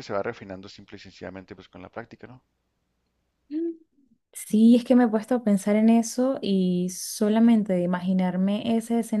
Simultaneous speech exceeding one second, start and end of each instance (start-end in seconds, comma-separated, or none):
none